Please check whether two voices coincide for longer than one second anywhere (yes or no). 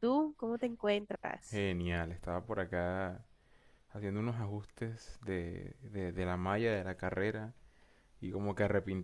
no